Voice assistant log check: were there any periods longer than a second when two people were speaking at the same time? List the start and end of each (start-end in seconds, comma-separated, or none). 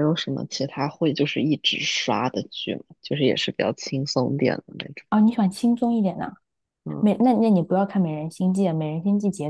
none